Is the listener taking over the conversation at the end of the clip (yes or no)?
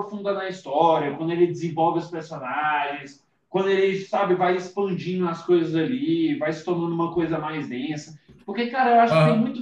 no